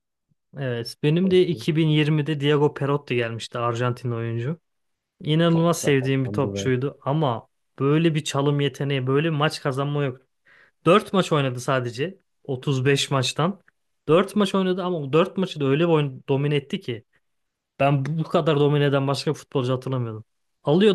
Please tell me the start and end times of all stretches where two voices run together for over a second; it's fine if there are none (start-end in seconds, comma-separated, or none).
5.5-6.7